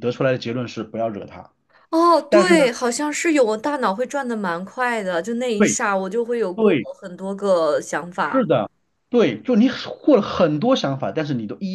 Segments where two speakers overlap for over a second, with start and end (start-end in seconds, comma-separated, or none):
none